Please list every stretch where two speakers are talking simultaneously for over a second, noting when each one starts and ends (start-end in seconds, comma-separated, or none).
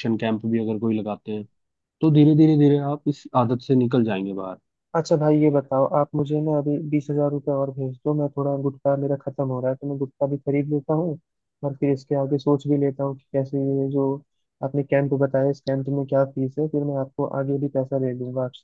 none